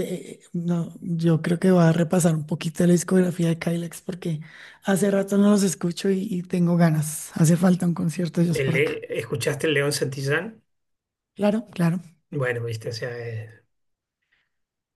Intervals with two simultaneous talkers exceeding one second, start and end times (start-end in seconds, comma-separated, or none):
none